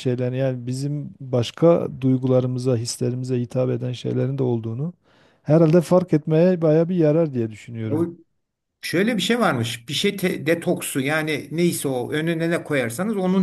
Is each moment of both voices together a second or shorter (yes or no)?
yes